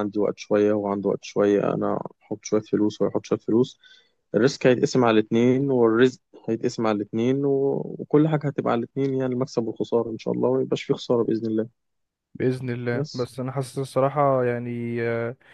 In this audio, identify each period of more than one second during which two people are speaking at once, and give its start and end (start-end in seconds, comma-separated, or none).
none